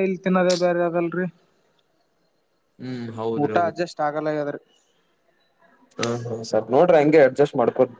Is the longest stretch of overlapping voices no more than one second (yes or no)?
yes